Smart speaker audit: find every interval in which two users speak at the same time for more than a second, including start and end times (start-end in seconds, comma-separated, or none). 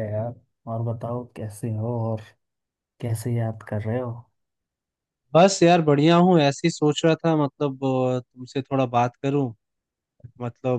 none